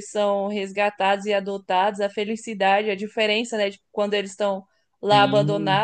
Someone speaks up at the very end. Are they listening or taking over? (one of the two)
listening